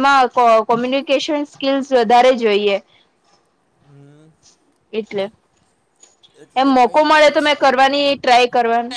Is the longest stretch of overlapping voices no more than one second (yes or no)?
no